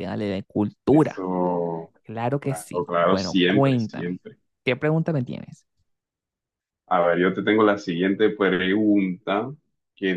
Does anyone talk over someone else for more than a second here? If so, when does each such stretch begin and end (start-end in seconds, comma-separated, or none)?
2.4-4.2